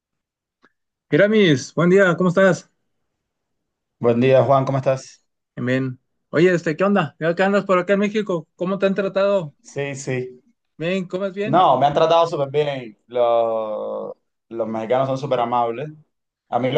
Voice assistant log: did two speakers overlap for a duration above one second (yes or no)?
no